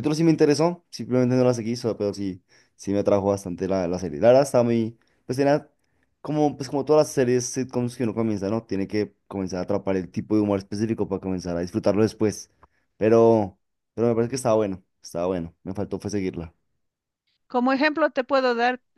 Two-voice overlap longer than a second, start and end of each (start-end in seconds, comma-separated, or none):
none